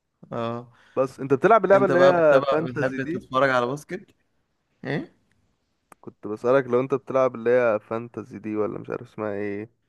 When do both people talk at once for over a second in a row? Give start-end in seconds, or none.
1.7-3.2